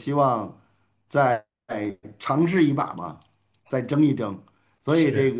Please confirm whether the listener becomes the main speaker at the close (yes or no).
no